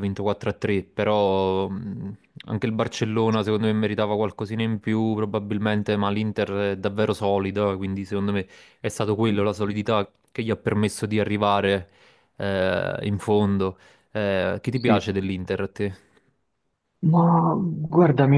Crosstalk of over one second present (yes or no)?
no